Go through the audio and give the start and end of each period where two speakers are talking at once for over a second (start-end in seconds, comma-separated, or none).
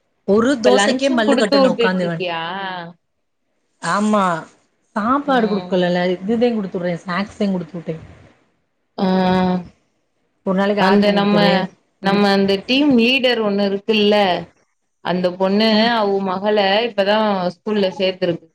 0.6-2.2